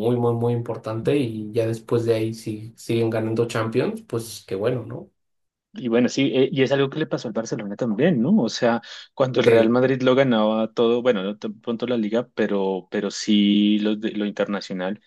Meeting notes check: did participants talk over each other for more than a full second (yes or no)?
no